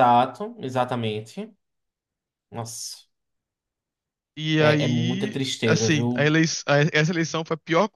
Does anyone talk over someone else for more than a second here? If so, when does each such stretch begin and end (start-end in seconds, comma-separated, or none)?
4.6-6.3